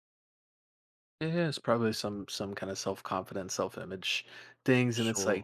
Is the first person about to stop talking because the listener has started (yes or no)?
no